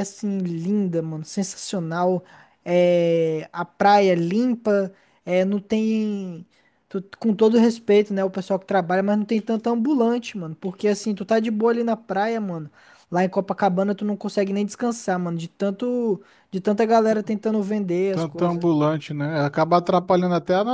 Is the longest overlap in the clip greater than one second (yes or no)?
no